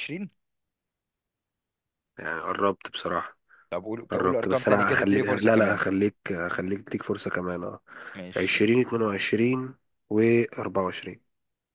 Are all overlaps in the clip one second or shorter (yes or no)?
no